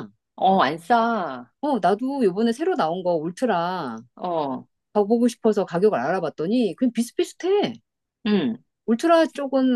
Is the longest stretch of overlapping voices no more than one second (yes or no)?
yes